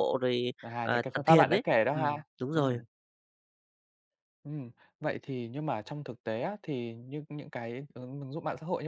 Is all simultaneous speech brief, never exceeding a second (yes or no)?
no